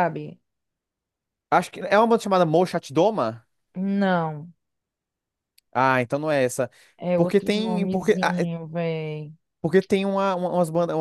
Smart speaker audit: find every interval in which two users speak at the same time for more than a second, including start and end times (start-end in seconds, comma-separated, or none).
7.1-8.3